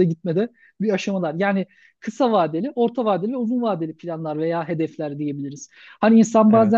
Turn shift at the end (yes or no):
no